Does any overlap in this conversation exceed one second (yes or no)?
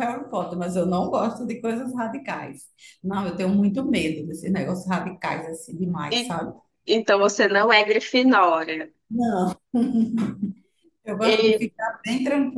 no